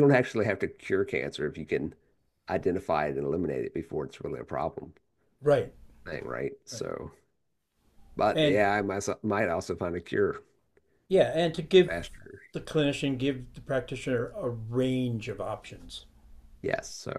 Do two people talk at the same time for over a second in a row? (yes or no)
no